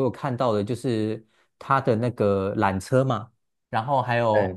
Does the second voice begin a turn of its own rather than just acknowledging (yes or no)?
no